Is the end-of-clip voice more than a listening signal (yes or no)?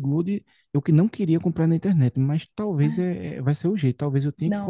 yes